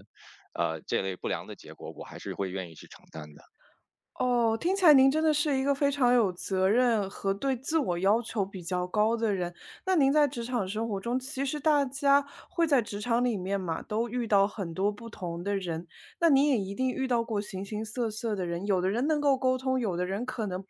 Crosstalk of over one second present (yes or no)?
no